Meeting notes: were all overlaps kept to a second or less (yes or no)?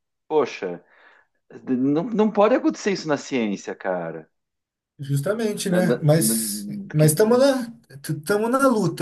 no